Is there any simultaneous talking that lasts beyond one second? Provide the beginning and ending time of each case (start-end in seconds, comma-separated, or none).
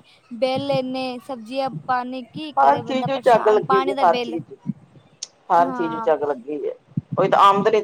2.6-4.4